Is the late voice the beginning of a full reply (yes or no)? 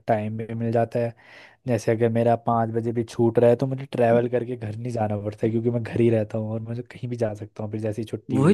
yes